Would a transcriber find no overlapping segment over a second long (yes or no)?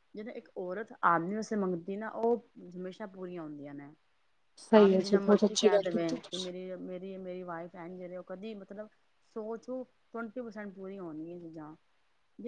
no